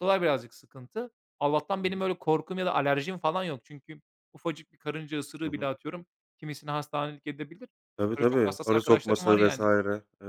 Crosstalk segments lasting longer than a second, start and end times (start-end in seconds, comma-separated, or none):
8.2-9.6